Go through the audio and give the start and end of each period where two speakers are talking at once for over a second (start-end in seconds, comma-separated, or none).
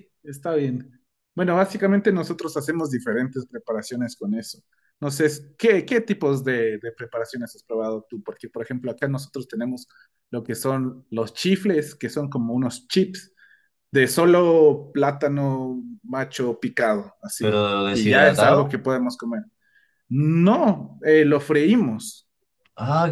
17.4-18.8